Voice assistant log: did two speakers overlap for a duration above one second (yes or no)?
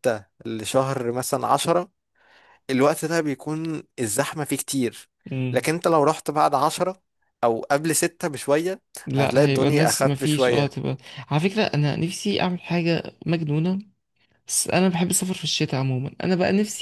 yes